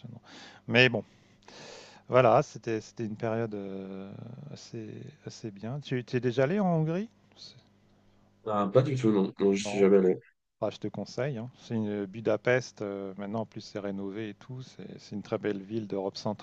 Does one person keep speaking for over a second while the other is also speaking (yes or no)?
no